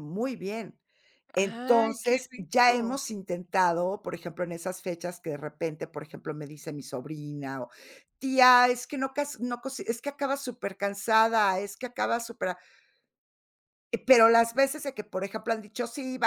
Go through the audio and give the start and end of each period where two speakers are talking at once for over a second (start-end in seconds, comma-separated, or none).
1.3-3.0